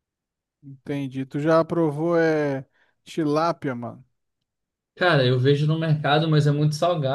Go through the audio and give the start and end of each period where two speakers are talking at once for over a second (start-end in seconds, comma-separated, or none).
none